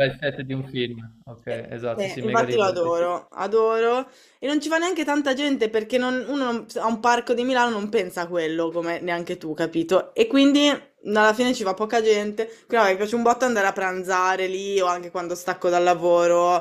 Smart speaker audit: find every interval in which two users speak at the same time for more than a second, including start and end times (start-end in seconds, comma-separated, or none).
1.5-3.0